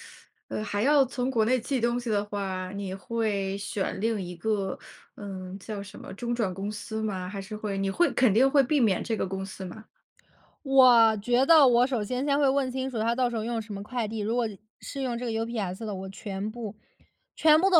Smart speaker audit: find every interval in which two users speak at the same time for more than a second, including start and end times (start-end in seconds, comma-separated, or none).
none